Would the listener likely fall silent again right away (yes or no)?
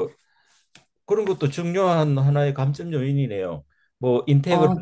yes